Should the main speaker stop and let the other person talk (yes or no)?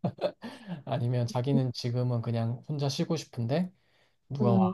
no